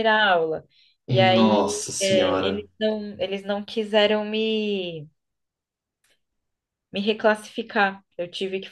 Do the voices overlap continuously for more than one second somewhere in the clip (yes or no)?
yes